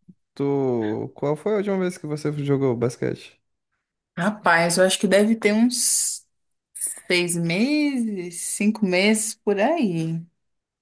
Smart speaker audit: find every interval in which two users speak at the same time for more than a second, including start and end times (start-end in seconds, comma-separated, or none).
none